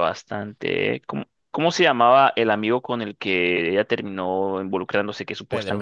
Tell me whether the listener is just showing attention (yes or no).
yes